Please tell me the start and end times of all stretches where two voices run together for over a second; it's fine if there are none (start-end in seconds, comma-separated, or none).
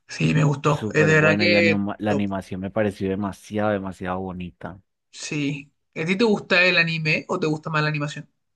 0.6-2.3